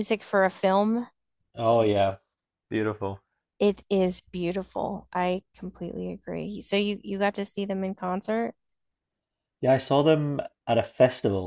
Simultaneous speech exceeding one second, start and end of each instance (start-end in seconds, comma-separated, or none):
none